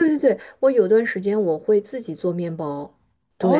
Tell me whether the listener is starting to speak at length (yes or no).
yes